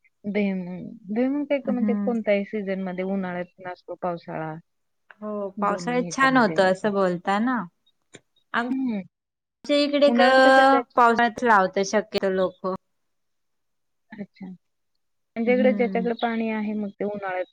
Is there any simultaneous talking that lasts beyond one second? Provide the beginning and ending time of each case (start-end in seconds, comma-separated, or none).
5.7-6.9